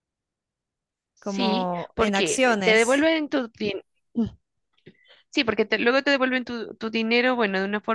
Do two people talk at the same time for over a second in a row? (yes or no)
yes